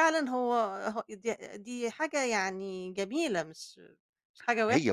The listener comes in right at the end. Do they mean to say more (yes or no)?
yes